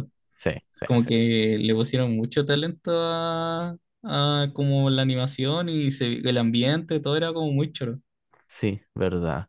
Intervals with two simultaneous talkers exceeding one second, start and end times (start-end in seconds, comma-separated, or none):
none